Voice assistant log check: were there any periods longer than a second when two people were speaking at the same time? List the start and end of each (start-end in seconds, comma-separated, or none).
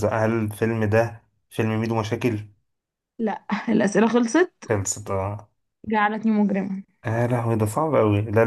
none